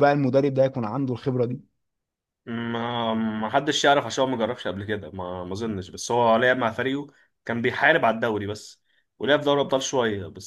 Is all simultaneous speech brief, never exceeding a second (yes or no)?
yes